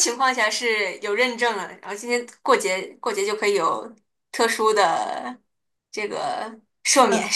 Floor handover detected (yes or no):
yes